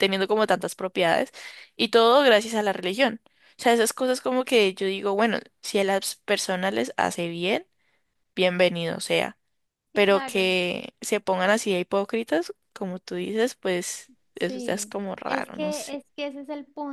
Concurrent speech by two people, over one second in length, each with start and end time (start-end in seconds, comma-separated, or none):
14.3-16.0